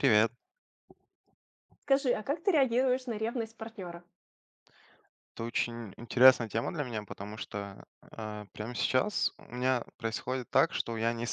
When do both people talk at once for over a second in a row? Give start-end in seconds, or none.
none